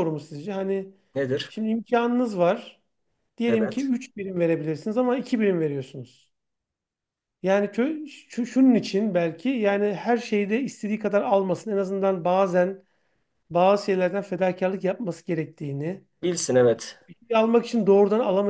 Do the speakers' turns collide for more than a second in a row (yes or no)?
no